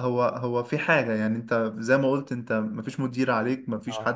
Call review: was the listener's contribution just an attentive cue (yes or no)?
yes